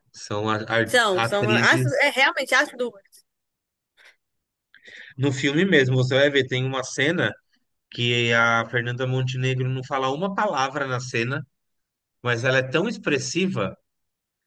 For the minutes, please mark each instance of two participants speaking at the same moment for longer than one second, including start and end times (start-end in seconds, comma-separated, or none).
0.8-2.0